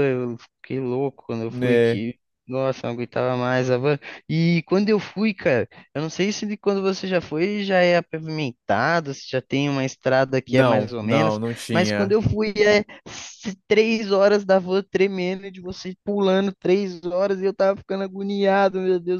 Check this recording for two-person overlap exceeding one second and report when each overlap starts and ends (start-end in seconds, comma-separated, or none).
10.5-12.2